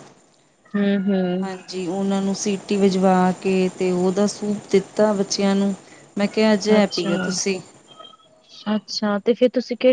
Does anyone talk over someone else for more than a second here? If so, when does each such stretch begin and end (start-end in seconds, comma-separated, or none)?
none